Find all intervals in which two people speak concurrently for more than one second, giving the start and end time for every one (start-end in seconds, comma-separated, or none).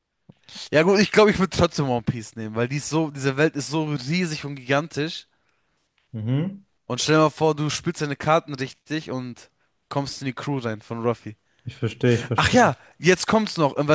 none